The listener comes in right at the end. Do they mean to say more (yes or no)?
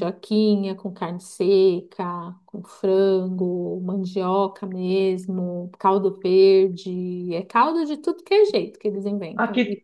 yes